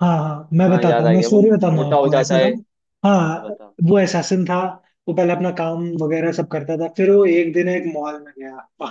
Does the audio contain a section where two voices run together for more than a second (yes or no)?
yes